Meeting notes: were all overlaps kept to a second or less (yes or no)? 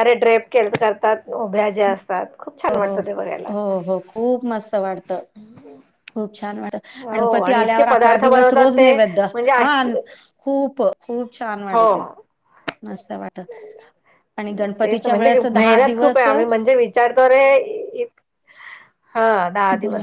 no